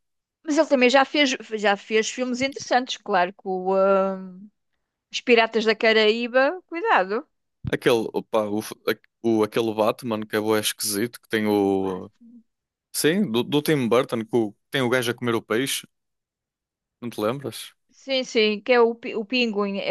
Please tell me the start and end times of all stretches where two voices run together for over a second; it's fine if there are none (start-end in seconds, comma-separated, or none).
none